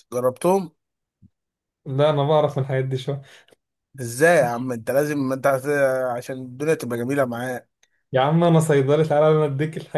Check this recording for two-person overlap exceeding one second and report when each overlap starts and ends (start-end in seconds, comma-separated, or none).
none